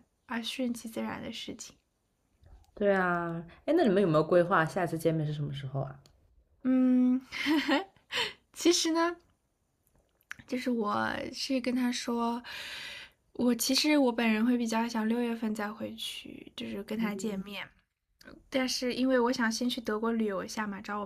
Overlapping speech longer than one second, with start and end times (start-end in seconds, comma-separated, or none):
none